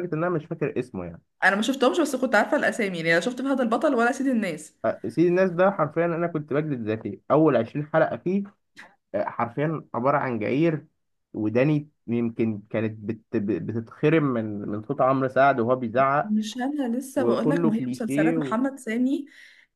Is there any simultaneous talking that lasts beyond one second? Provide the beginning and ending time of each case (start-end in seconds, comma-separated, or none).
17.1-18.5